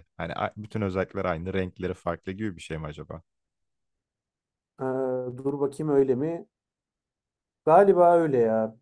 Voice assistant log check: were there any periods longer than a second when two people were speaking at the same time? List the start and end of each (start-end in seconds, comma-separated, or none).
none